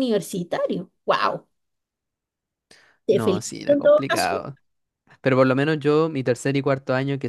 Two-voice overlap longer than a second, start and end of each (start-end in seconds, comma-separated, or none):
3.1-4.5